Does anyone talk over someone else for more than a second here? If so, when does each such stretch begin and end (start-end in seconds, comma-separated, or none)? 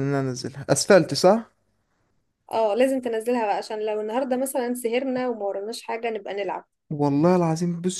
none